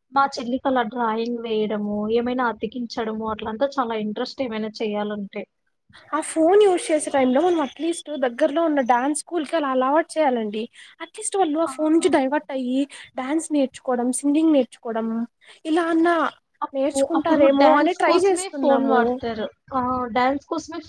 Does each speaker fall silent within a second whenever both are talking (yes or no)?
no